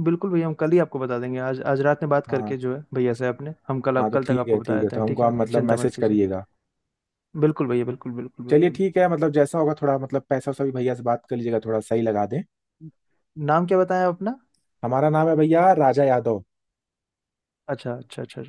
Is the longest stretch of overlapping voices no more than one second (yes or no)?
no